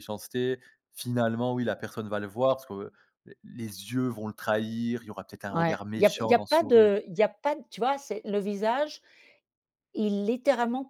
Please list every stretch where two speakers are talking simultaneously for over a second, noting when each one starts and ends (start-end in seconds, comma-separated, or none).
5.5-6.9